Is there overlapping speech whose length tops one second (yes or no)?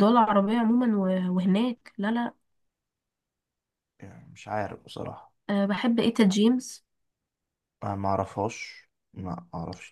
no